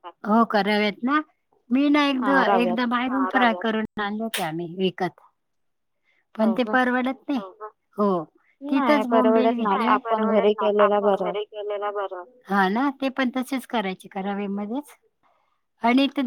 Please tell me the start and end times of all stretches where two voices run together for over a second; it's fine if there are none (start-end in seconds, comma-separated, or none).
8.7-11.3